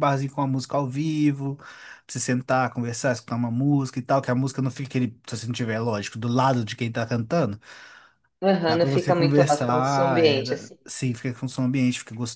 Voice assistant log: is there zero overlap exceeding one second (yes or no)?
no